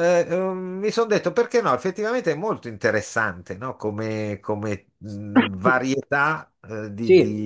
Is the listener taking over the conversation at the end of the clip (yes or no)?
yes